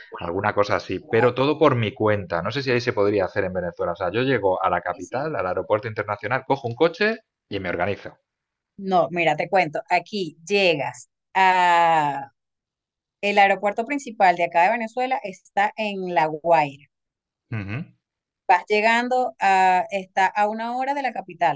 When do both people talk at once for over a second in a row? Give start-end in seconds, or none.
none